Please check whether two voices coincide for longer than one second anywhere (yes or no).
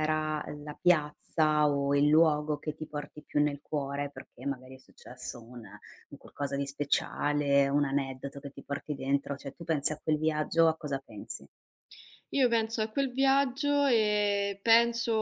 no